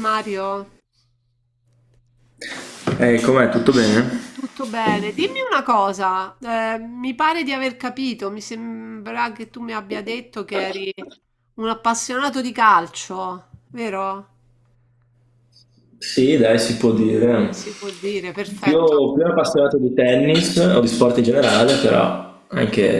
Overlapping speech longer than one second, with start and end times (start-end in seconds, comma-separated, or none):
none